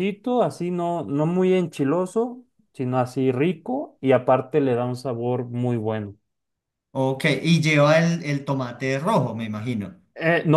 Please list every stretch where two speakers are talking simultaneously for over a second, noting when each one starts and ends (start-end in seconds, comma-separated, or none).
none